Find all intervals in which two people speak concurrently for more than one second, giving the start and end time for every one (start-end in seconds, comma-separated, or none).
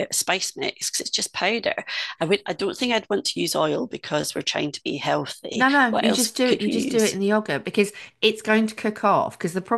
5.5-7.2